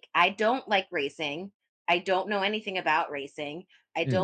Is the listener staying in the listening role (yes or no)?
yes